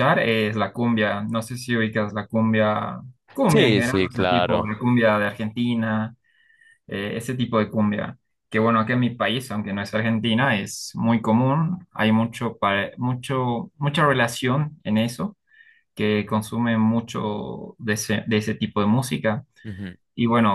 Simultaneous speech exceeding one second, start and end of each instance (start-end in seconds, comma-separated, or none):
3.5-4.7